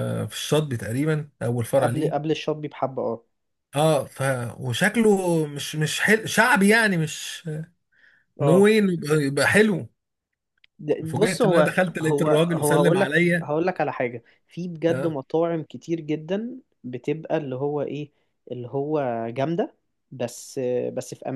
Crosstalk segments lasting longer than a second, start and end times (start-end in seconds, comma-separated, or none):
11.1-13.5